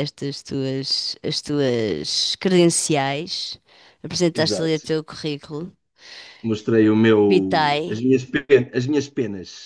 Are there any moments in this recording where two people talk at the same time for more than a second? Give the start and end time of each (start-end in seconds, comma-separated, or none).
none